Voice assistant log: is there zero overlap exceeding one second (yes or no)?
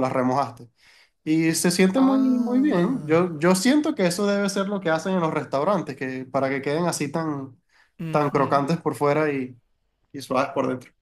no